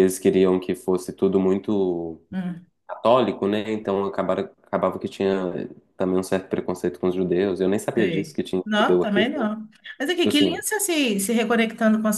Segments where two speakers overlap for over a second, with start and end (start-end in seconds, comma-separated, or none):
8.0-9.5